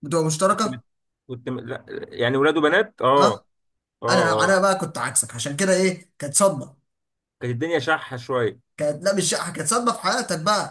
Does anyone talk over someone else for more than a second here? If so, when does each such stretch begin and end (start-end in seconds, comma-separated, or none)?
none